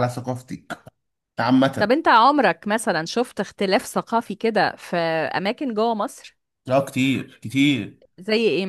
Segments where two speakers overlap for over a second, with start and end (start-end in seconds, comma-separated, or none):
none